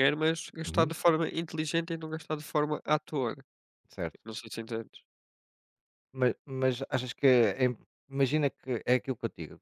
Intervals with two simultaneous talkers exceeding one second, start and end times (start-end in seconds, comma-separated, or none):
none